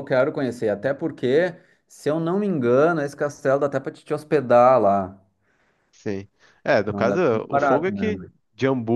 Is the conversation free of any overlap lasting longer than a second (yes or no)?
no